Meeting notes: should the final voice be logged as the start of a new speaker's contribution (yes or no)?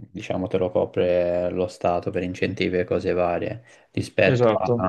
no